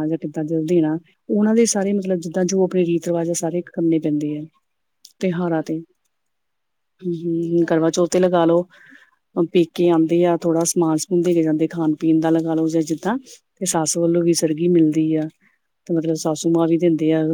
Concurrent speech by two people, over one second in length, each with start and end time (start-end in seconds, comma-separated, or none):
none